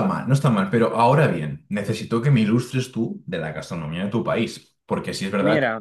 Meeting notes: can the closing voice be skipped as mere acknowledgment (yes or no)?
yes